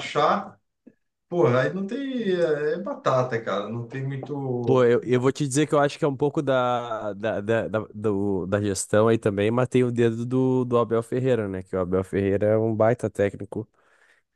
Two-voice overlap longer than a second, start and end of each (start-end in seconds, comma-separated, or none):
none